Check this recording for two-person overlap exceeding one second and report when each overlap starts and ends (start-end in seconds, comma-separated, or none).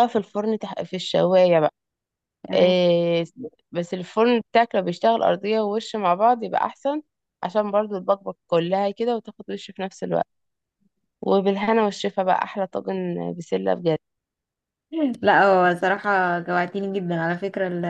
none